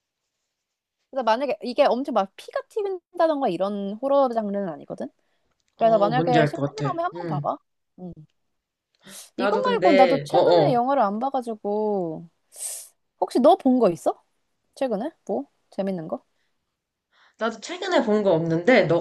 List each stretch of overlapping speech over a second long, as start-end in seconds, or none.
5.8-7.5, 9.4-10.8